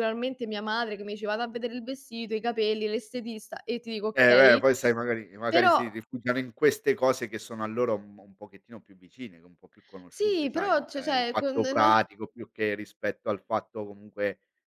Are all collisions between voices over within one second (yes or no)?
no